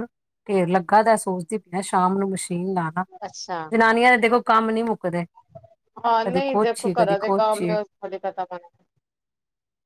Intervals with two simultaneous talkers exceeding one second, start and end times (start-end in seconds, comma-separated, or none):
6.2-7.8